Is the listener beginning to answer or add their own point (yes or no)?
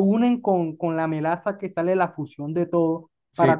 no